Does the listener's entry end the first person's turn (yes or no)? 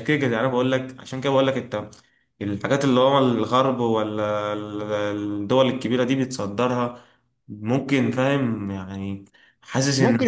yes